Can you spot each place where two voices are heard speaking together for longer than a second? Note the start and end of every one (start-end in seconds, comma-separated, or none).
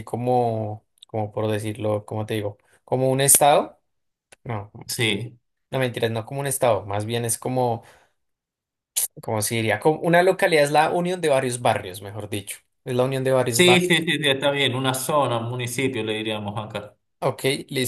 none